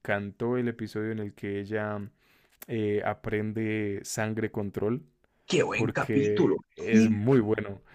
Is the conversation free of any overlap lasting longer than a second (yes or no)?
no